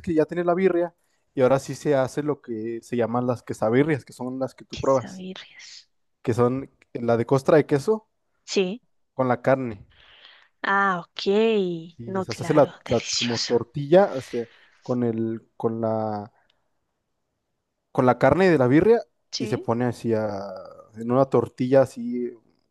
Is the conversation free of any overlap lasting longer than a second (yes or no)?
no